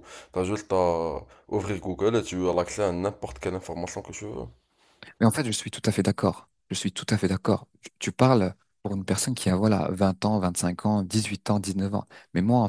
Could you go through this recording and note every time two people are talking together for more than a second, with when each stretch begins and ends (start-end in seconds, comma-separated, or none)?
none